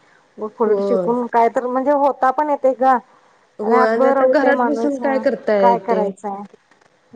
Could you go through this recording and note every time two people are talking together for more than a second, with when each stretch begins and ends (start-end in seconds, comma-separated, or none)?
none